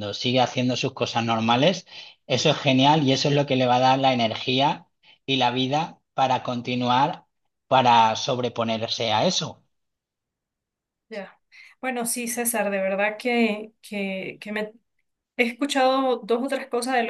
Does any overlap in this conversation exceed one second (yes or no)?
no